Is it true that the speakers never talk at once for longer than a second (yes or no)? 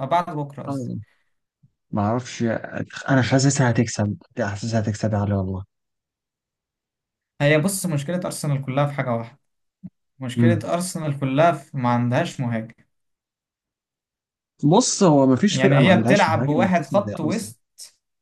no